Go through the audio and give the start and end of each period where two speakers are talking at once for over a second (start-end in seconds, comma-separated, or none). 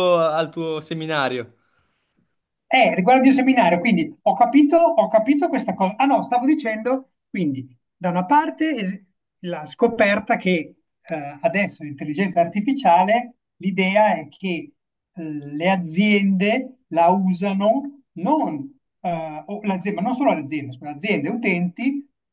none